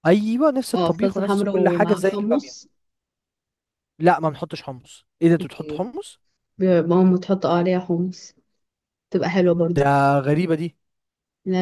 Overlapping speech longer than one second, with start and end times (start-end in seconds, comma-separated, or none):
0.7-2.6